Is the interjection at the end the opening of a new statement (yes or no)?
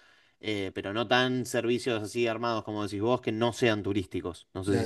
yes